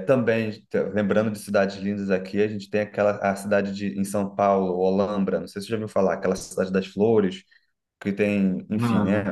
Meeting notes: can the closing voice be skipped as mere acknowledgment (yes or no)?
yes